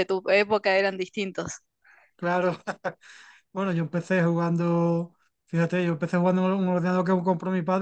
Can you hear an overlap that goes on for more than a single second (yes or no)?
no